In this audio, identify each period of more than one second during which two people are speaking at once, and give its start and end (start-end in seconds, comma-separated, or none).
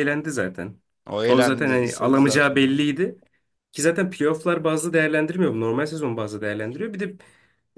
1.3-2.6